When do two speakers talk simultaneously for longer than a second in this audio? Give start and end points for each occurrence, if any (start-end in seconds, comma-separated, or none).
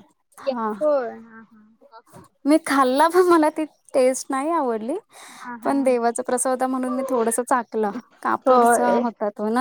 none